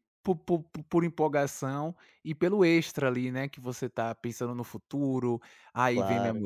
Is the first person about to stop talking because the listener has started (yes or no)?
no